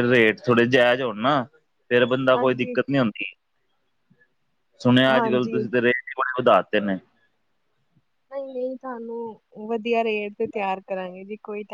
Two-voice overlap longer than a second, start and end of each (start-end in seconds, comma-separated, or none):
none